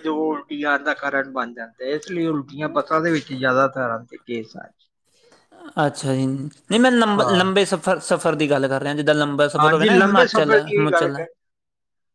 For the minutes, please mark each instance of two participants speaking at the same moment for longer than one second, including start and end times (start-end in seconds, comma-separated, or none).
9.6-11.2